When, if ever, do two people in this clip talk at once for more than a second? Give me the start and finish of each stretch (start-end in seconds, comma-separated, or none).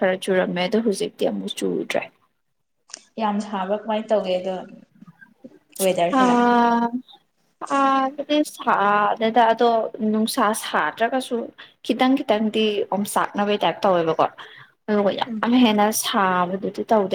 none